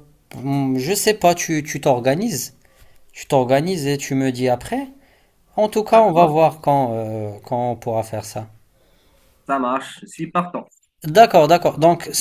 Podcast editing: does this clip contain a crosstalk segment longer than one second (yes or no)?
no